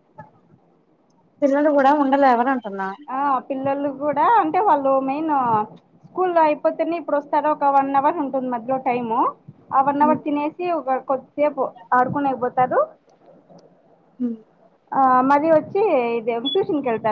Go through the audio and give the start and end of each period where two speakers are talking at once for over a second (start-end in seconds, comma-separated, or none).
none